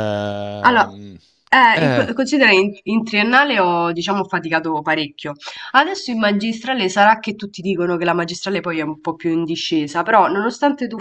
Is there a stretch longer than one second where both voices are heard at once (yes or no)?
no